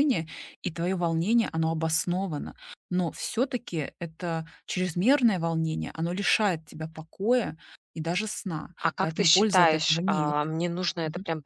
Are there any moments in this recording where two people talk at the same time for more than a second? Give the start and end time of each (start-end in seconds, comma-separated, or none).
8.8-10.4